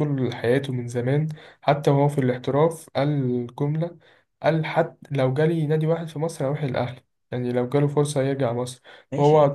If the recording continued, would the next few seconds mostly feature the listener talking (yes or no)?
no